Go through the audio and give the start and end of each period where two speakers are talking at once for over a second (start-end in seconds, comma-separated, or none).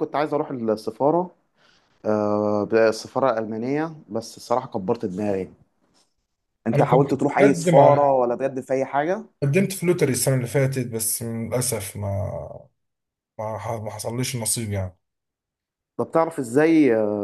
6.7-8.2